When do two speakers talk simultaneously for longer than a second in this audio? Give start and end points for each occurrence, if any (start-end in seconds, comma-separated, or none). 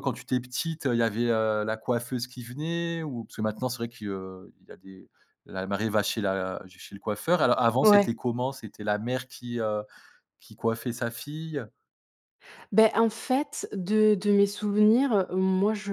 none